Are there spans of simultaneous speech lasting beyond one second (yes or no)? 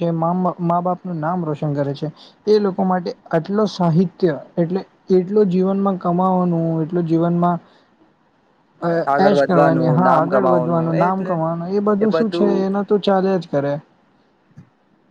yes